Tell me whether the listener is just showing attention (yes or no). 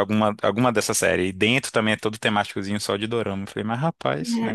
no